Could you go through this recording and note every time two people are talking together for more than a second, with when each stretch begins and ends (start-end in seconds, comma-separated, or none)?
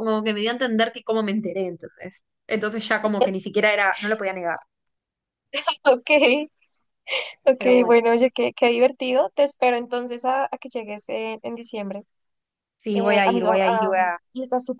12.9-14.2